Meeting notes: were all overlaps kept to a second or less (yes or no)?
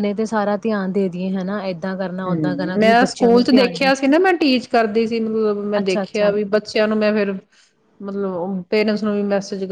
no